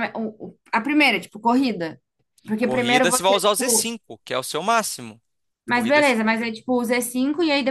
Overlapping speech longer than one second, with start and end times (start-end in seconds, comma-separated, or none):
2.6-3.9